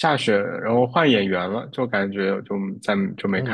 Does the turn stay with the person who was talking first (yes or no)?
no